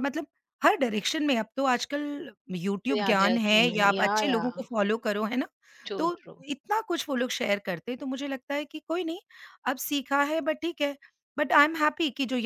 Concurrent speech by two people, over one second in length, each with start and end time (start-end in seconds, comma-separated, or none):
2.9-4.5